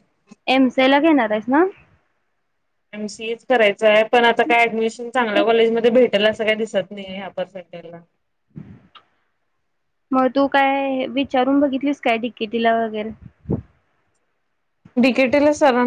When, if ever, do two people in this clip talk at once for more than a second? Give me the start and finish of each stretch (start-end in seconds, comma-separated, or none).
none